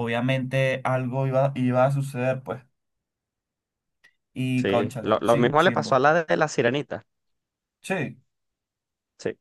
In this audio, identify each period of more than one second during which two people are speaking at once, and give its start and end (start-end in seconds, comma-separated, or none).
4.5-6.0